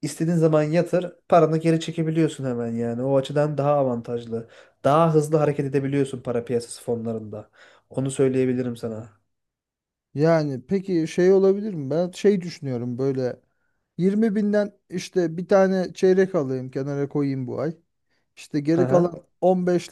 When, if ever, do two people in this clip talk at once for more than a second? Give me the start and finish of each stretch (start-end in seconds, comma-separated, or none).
none